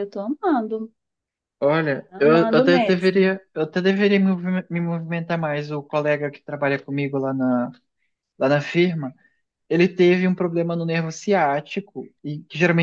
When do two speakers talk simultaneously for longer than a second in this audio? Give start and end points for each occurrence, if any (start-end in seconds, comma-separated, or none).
2.1-3.4